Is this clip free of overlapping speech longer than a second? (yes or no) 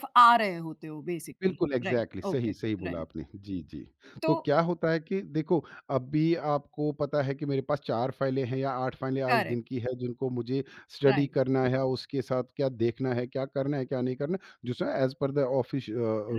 no